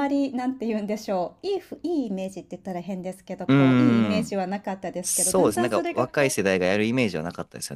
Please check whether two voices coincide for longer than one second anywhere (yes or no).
yes